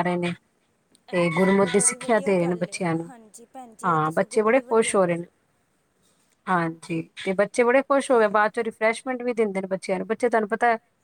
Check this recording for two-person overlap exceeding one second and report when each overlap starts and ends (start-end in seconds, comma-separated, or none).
1.2-3.1, 3.8-5.3